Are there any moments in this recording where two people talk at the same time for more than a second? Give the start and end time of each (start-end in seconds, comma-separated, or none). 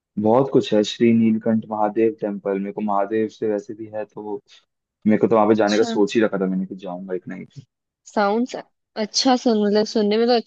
none